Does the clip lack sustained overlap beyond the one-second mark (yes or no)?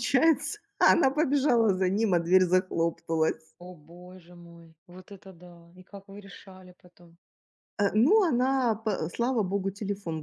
yes